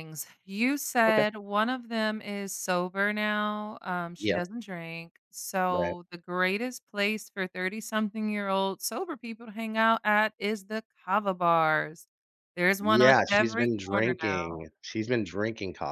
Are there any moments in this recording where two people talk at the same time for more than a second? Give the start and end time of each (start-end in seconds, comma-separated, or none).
12.8-14.6